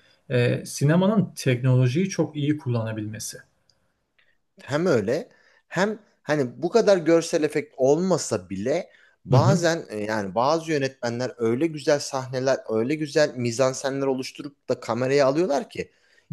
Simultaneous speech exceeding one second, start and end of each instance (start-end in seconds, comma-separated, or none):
none